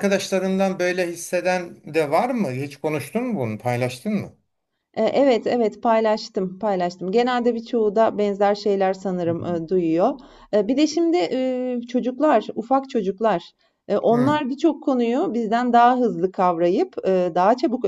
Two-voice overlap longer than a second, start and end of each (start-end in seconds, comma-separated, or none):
none